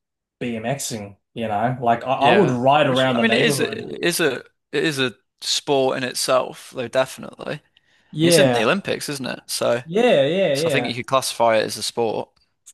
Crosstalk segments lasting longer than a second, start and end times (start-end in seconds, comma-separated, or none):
2.1-3.9